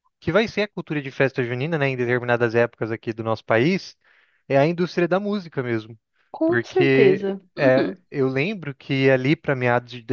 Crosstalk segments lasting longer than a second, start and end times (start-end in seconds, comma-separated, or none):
6.5-8.0